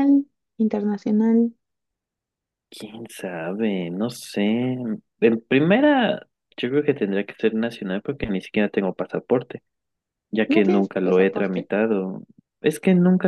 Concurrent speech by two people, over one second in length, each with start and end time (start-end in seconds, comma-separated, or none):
10.5-11.7